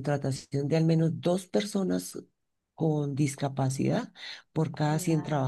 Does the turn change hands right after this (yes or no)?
no